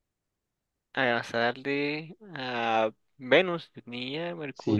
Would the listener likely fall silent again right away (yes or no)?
no